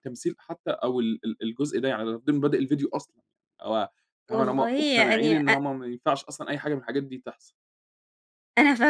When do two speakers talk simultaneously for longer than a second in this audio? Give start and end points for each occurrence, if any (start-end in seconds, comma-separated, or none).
4.3-5.5